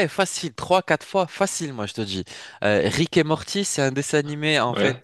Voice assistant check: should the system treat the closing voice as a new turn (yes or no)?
no